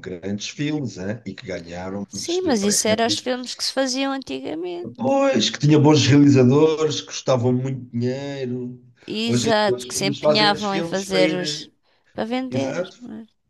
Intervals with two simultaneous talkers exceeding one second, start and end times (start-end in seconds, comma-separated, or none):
2.1-3.3, 9.2-11.7